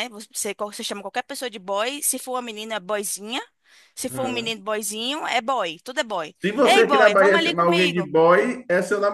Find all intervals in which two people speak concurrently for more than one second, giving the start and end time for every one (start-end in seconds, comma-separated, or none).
6.4-8.1